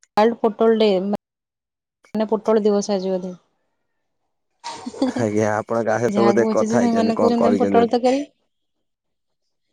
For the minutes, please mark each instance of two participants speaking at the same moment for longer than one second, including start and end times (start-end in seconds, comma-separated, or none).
6.2-8.0